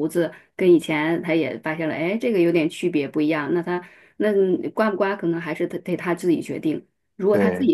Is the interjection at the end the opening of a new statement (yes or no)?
no